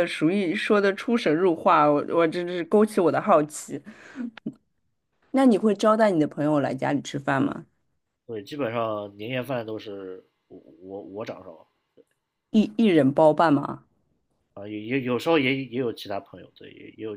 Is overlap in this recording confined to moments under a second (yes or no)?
yes